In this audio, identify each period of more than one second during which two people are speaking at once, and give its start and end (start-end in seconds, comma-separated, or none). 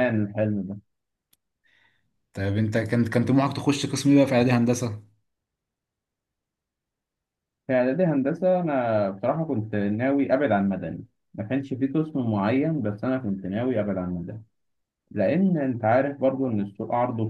none